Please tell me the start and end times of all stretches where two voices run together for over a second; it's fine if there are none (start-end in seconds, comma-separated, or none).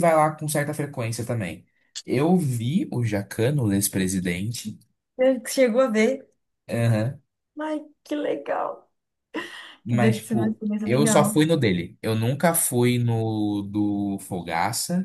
9.9-11.4